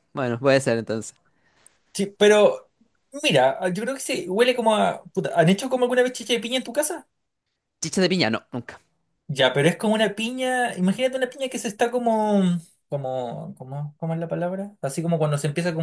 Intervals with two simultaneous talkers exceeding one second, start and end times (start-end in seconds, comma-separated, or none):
none